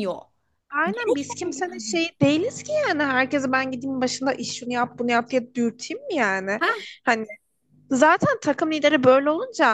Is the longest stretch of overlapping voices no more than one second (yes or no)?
no